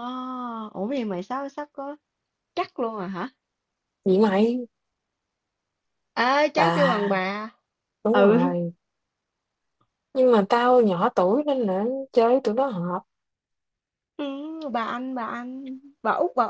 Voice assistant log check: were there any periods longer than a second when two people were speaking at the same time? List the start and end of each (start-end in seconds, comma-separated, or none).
none